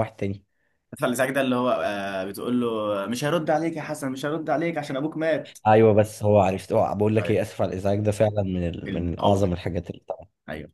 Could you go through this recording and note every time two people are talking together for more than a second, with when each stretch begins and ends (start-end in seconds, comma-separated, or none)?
none